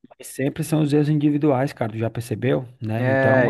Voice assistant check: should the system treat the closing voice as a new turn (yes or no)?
yes